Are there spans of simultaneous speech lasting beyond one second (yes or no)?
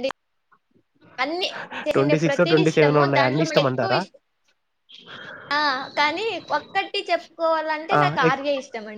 yes